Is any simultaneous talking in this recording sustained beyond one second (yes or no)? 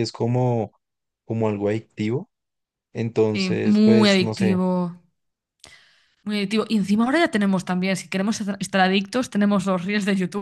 yes